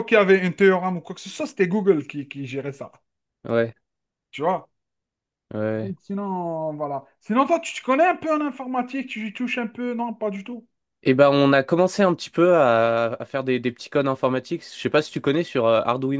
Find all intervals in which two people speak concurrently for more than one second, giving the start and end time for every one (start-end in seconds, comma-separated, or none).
none